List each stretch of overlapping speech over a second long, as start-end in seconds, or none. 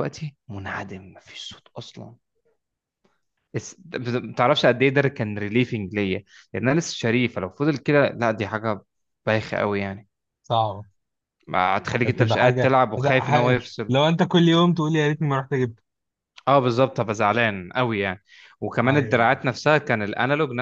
12.0-14.0